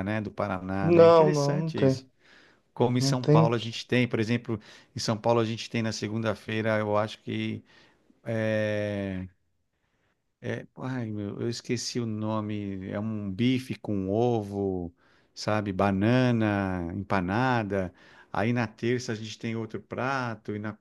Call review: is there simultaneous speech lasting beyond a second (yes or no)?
yes